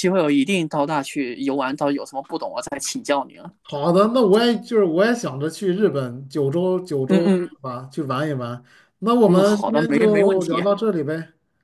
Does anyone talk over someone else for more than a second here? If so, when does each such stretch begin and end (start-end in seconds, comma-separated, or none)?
9.2-10.6